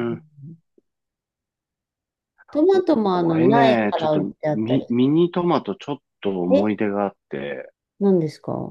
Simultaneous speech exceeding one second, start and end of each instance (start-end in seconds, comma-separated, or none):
2.7-4.9